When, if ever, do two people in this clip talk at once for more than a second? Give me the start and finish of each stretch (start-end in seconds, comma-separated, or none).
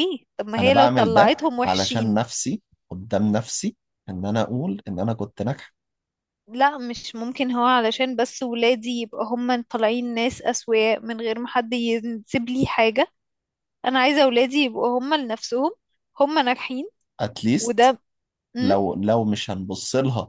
0.6-2.2